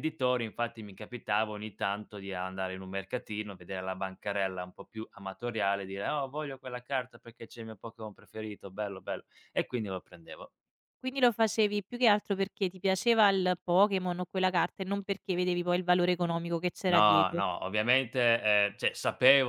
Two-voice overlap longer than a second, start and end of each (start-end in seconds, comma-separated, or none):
none